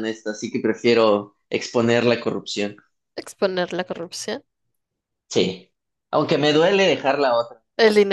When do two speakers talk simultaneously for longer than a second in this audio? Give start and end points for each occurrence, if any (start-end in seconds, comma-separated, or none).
none